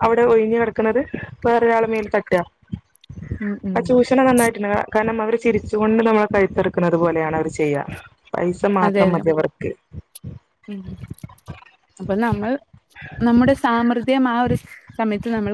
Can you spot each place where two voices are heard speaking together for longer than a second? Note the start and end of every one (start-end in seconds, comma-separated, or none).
none